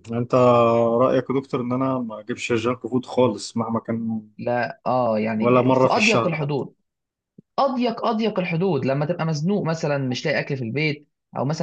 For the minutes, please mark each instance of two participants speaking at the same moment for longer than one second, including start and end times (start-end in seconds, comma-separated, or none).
5.4-6.6